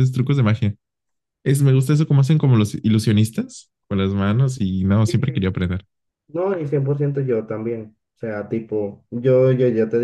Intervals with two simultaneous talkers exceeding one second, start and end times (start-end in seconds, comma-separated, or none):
none